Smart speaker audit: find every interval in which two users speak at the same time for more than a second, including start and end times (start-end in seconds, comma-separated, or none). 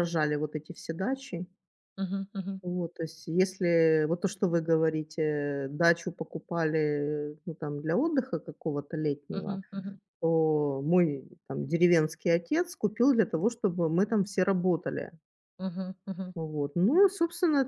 none